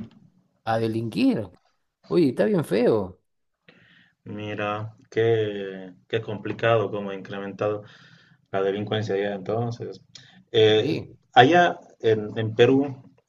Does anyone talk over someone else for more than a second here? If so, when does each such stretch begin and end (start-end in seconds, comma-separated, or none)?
none